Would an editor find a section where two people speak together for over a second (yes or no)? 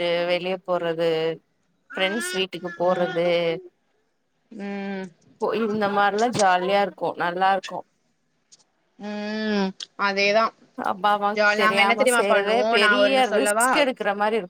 yes